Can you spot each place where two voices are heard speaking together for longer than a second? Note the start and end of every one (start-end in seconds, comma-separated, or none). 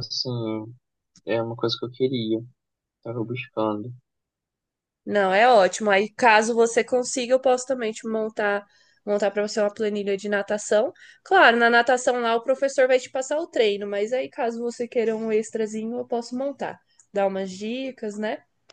none